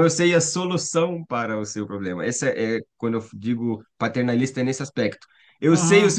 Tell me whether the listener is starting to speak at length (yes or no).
no